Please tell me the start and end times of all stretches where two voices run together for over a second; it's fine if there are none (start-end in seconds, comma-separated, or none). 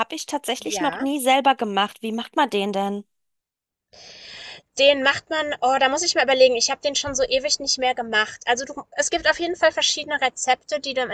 none